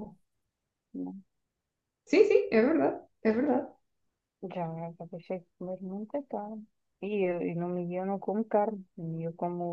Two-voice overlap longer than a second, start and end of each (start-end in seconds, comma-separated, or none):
none